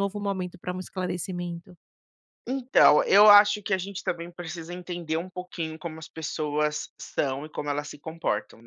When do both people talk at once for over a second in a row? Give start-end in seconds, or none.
none